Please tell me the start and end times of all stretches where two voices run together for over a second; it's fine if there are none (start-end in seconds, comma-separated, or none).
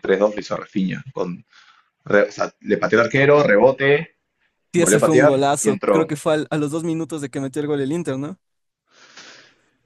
4.8-6.1